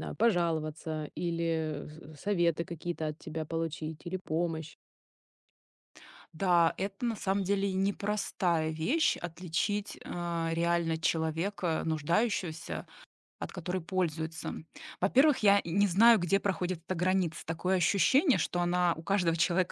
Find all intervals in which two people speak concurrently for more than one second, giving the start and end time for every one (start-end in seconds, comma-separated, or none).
none